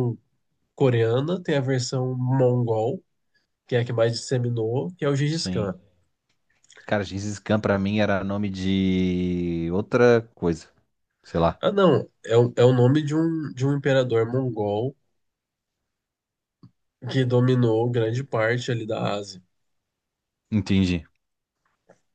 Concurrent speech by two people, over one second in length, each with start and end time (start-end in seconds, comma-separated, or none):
none